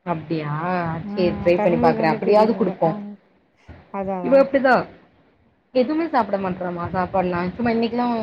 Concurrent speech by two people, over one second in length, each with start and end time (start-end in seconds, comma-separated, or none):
1.1-2.9